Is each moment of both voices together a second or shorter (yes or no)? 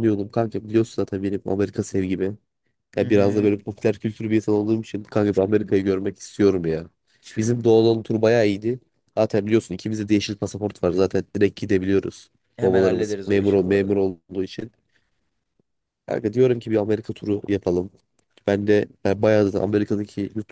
no